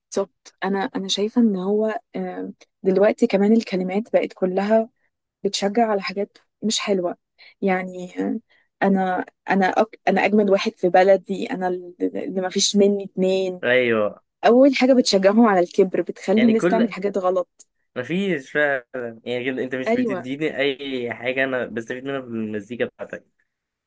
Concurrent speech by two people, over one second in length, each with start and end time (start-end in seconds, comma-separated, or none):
none